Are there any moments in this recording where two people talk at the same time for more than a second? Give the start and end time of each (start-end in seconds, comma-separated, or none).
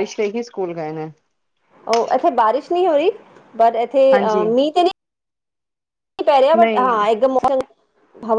none